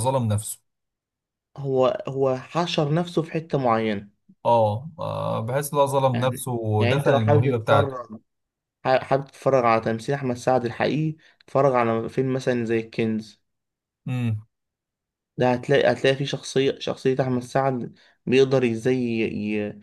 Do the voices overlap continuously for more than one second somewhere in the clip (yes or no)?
yes